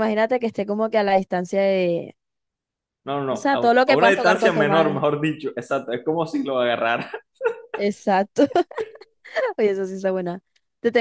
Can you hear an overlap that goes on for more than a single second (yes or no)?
yes